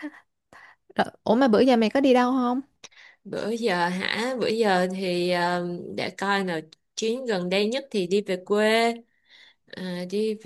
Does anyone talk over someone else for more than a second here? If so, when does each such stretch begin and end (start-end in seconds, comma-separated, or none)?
none